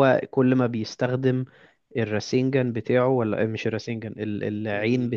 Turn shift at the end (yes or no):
no